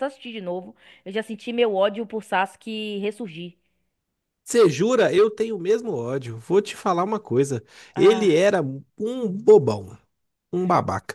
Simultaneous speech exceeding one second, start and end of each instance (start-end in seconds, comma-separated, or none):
none